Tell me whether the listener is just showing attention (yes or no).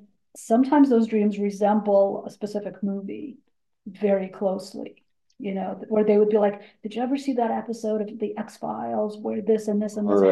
yes